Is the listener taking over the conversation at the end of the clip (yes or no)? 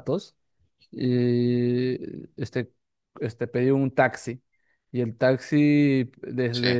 no